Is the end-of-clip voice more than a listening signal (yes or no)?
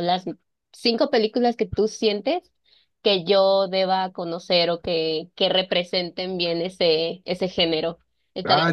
yes